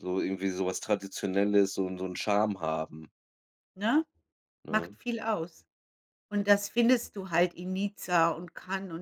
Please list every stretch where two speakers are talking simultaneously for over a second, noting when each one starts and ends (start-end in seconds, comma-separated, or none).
none